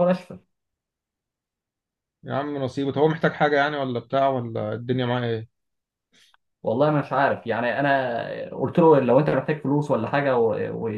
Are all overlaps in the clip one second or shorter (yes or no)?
yes